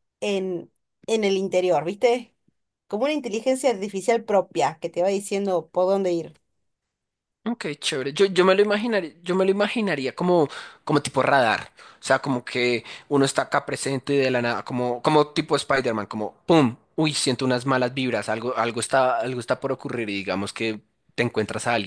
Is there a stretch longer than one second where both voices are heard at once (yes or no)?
no